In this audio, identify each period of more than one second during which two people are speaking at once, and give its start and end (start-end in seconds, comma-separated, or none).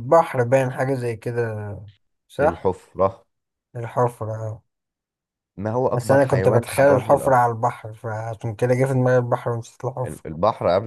5.9-7.4